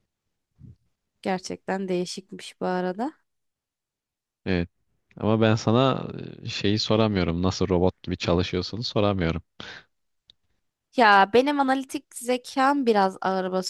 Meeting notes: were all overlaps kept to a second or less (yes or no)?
yes